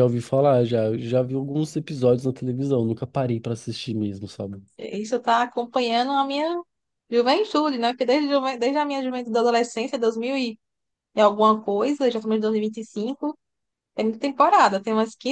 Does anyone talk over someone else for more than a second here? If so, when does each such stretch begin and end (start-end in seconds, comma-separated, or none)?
none